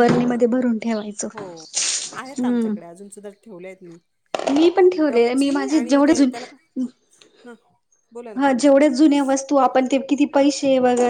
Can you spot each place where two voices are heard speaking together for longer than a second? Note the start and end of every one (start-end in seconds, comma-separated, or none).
4.8-6.3